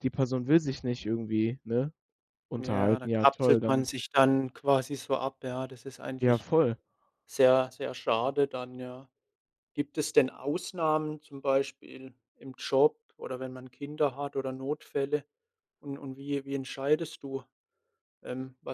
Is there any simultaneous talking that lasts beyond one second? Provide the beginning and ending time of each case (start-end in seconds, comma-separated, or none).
2.6-3.9